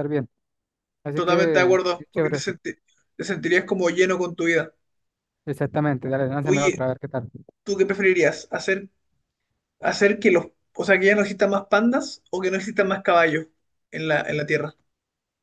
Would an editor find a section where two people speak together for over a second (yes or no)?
yes